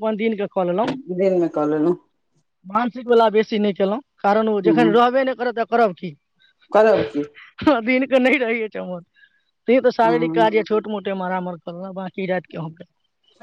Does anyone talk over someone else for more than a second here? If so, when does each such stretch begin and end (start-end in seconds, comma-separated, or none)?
none